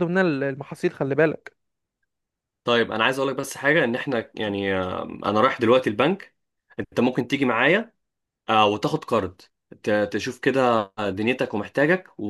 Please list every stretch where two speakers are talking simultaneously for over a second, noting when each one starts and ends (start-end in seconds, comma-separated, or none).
none